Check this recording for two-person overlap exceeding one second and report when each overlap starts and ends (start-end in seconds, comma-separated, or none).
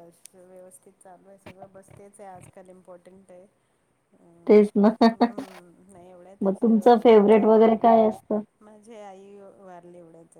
none